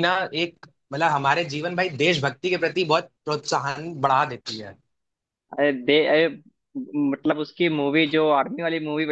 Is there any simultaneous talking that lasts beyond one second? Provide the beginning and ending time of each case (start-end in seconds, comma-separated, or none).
none